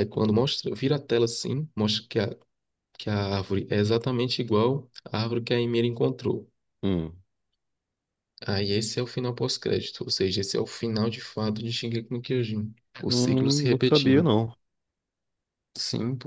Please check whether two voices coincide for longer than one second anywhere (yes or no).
yes